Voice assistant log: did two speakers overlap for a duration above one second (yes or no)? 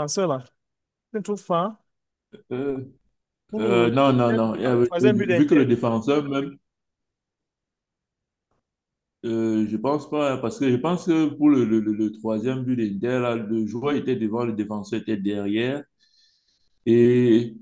yes